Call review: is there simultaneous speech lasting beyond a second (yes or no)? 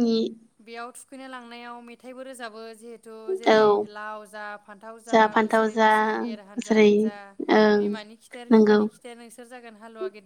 no